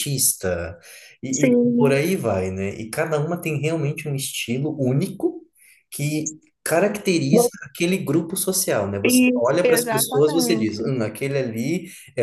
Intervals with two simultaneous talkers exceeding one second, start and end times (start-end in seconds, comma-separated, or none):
9.0-10.9